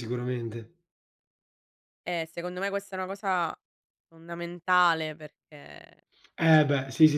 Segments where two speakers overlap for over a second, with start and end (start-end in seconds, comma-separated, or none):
none